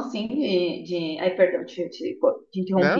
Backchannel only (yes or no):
yes